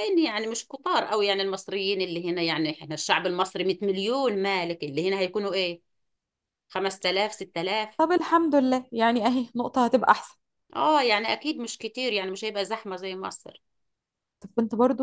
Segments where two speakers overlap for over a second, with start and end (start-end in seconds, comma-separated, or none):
none